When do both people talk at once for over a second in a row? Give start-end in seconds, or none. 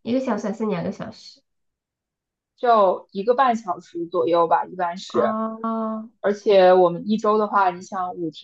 none